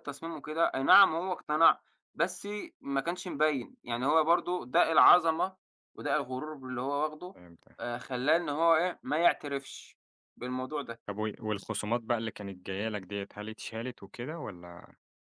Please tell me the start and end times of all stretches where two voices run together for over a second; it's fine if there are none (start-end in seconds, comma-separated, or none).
none